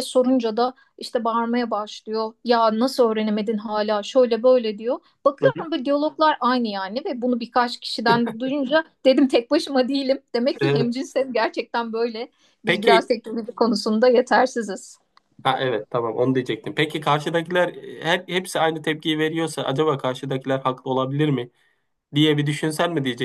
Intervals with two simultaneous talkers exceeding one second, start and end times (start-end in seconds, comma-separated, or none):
none